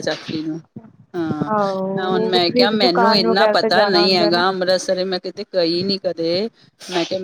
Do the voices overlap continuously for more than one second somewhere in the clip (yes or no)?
yes